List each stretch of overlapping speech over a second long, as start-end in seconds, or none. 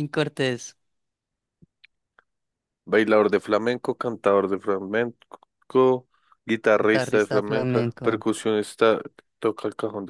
6.8-8.1